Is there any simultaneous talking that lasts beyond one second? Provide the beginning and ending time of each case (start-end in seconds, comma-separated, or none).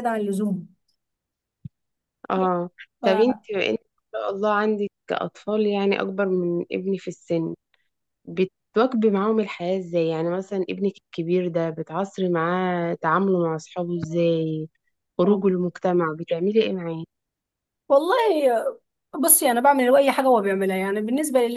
none